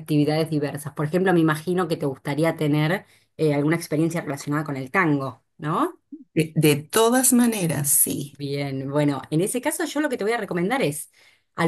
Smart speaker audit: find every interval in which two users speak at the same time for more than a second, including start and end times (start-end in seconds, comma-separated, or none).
none